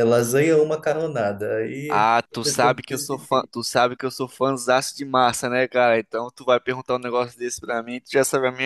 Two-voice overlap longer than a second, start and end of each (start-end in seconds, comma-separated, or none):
1.9-3.5